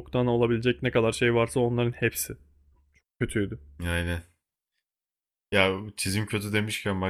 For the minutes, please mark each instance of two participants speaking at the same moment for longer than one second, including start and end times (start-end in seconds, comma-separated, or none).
none